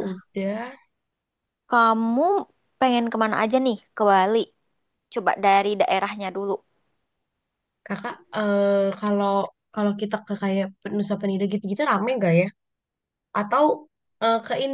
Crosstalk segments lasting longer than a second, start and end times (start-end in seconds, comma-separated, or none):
none